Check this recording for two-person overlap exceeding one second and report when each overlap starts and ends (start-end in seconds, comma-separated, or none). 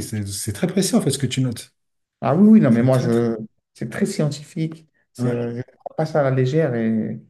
none